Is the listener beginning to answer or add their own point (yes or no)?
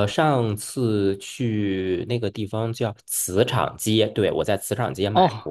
yes